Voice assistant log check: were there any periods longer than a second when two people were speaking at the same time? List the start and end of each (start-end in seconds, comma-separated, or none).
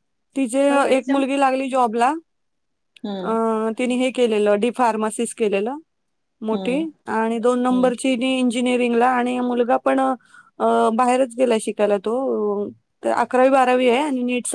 none